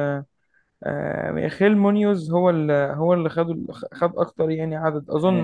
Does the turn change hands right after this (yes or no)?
yes